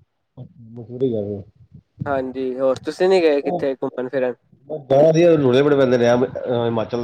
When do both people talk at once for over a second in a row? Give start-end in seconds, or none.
none